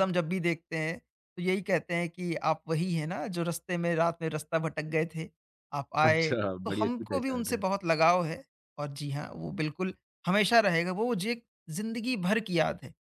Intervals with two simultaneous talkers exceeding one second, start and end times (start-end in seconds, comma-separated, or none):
6.0-7.6